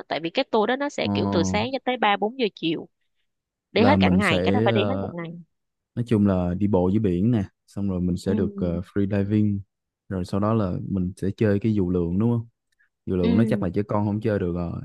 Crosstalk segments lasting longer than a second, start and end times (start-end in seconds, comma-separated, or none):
3.8-5.1